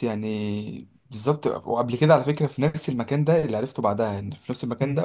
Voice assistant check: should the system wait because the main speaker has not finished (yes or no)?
yes